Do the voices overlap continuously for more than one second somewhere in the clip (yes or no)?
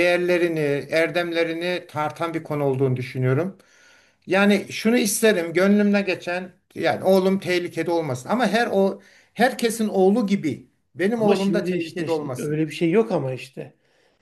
yes